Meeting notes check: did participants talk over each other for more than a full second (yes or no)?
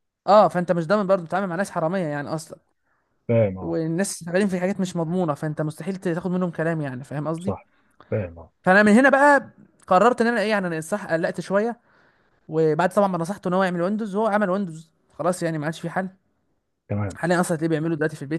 no